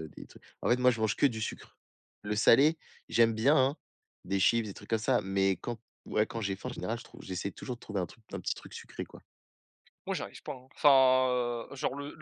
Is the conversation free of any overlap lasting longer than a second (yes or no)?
yes